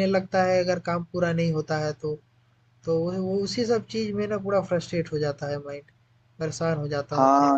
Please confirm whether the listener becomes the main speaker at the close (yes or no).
yes